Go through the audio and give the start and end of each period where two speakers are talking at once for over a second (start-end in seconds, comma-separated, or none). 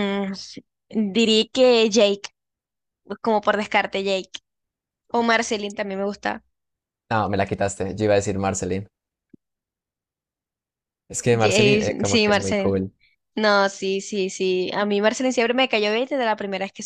11.3-12.7